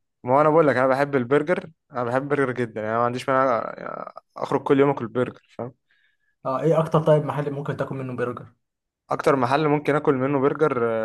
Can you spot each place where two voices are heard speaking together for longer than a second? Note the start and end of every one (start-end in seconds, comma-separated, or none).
none